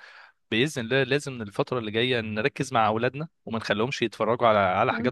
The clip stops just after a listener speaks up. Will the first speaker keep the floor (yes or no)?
yes